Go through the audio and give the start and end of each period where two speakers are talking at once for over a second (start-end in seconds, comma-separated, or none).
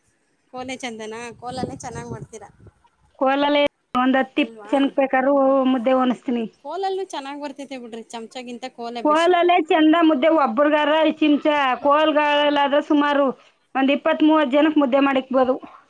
none